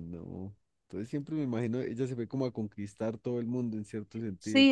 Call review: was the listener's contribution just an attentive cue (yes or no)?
no